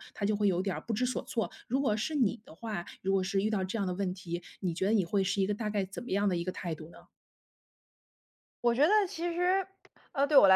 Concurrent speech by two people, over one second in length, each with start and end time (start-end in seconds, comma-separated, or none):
none